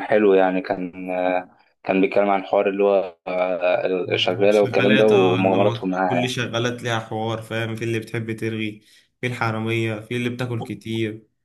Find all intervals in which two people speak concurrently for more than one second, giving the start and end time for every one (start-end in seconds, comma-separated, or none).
4.5-6.4